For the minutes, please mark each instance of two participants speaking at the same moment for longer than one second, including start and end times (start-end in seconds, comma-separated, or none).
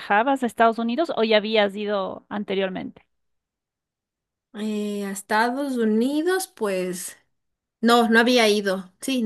none